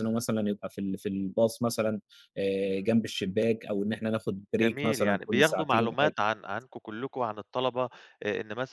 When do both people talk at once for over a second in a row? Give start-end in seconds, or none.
4.5-6.2